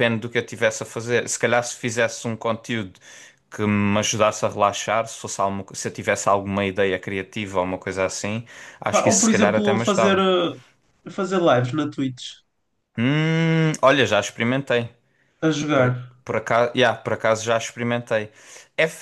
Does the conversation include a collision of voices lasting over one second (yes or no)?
yes